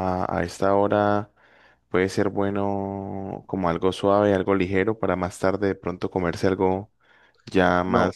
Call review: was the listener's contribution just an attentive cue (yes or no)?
no